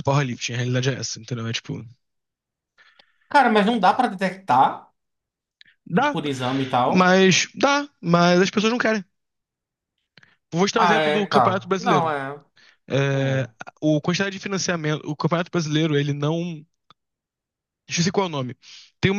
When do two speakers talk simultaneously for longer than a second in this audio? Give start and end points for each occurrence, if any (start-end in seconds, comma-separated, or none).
10.8-12.1